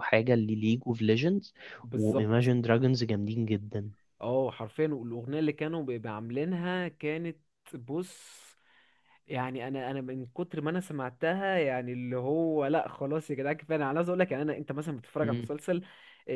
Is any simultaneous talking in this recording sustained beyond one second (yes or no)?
no